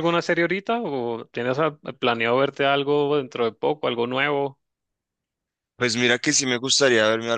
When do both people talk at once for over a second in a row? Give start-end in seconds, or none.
none